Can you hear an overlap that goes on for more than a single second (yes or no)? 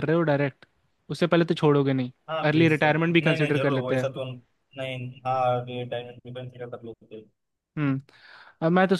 yes